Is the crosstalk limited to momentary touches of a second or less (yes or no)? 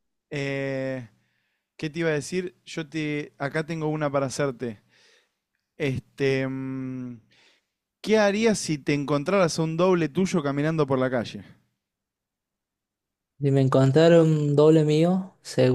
yes